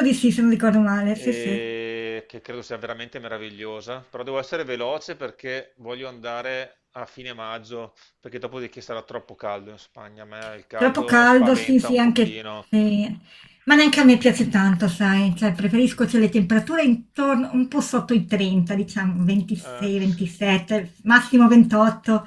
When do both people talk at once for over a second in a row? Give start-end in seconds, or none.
10.7-12.7